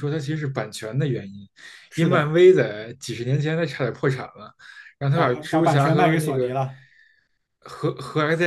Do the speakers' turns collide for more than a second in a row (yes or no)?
yes